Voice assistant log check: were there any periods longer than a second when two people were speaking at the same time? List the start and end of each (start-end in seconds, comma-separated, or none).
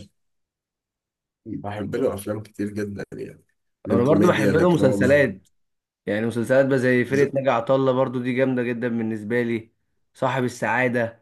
3.9-5.3